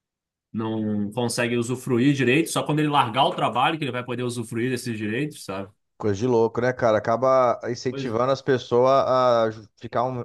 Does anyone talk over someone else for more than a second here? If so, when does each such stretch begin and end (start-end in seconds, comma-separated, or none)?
none